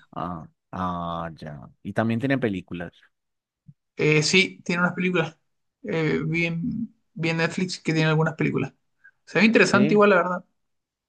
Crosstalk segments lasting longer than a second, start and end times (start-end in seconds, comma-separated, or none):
none